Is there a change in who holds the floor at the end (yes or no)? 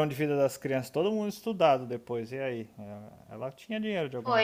yes